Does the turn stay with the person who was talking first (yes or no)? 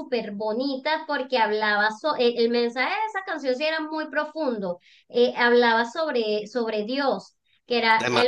yes